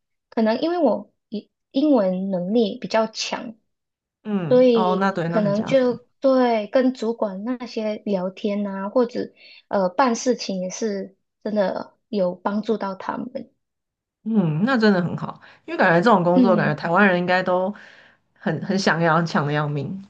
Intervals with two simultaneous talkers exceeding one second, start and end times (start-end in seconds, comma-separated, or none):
4.5-6.0